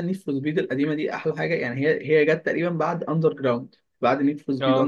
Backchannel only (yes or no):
yes